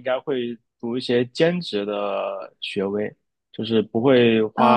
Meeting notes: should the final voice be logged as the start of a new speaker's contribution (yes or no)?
no